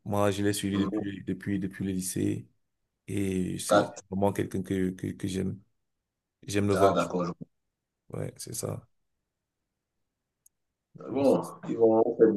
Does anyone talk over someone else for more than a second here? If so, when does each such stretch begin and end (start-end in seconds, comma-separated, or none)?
none